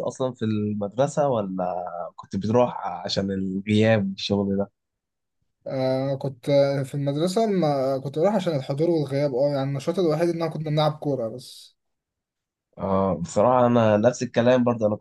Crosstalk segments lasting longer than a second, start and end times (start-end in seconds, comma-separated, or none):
none